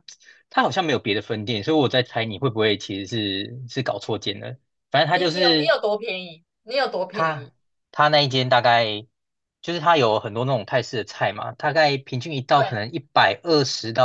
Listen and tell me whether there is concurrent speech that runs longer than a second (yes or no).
no